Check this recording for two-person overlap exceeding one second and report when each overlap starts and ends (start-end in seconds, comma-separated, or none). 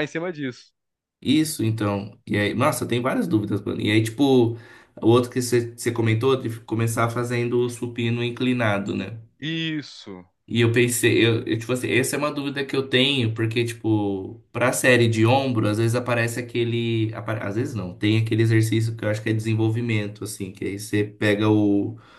none